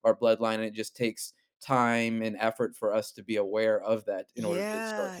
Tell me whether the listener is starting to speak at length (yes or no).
yes